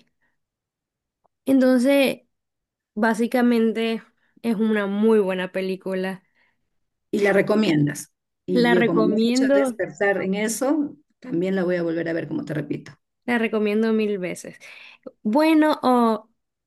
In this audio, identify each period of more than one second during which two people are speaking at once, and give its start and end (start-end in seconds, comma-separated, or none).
8.5-9.8